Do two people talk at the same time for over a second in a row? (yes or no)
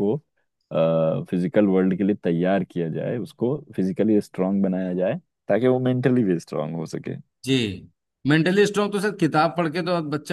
no